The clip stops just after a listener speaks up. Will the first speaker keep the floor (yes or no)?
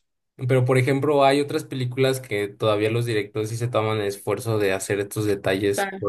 yes